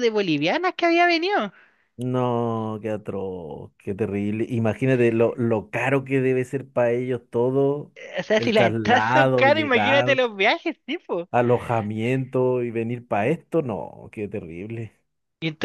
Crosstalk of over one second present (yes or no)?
yes